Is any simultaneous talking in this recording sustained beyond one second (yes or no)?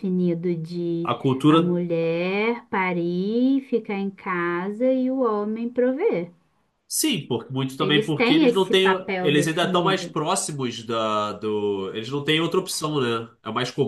yes